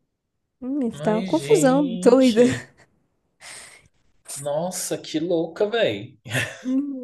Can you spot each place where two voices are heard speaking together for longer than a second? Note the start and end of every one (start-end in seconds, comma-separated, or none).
0.9-2.4